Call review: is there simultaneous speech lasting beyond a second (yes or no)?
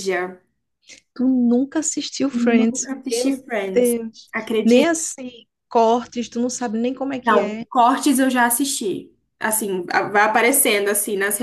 yes